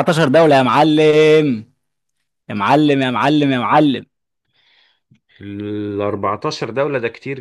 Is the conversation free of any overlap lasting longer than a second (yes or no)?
yes